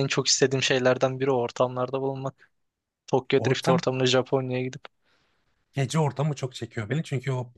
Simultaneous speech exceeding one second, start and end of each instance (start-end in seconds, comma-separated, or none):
none